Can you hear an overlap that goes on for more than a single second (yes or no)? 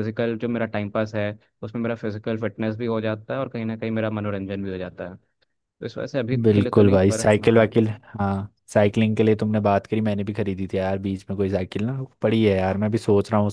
yes